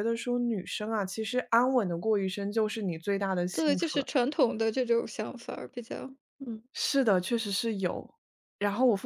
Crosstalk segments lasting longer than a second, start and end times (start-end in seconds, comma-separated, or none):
none